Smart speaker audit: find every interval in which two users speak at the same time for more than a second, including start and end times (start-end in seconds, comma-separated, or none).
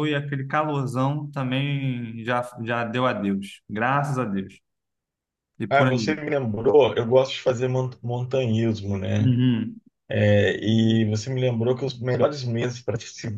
none